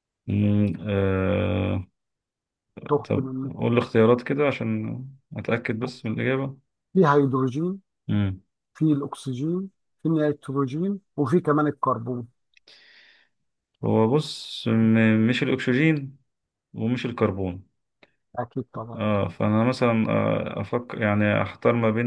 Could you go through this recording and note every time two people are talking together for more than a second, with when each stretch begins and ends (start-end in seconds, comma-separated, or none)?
none